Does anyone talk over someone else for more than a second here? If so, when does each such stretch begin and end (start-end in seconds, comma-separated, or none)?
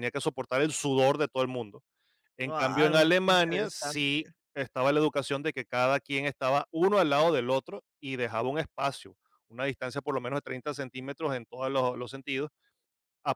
2.4-4.3